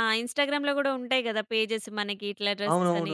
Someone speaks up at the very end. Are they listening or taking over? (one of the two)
taking over